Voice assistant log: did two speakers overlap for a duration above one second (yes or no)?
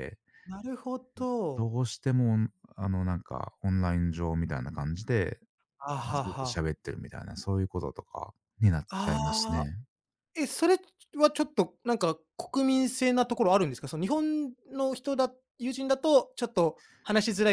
no